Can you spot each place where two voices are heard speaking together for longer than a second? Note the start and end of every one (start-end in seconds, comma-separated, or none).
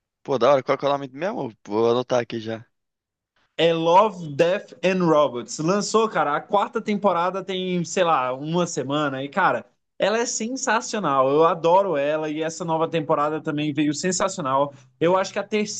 none